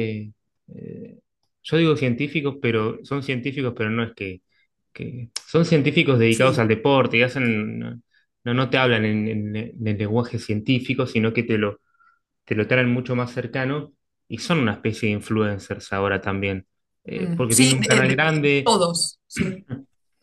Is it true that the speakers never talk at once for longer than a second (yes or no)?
no